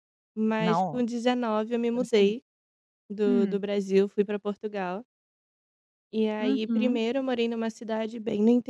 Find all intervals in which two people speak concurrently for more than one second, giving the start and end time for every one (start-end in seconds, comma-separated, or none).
none